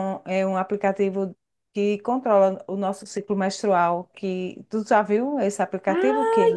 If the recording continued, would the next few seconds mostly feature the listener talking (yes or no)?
yes